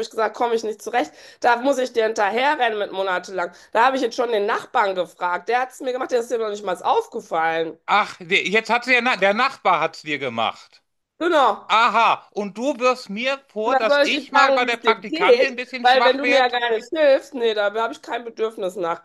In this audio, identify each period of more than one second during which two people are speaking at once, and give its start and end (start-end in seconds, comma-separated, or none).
13.6-16.6